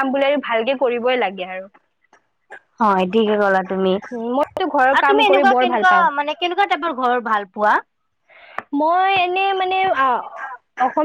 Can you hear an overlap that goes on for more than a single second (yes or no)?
yes